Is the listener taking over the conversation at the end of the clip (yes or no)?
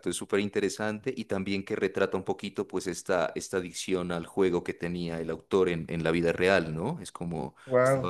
no